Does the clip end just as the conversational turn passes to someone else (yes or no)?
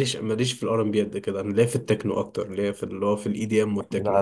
yes